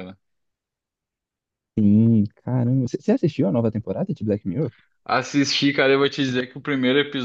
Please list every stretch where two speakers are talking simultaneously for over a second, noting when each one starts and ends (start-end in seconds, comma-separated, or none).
none